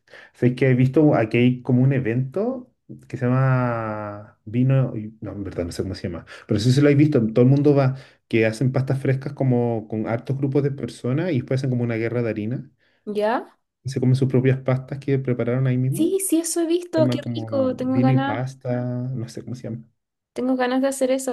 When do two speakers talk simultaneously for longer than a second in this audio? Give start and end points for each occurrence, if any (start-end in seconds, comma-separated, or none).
16.9-18.5